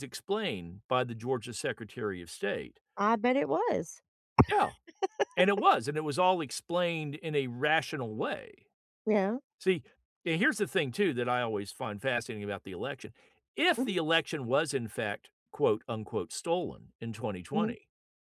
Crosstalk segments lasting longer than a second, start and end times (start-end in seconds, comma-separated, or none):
none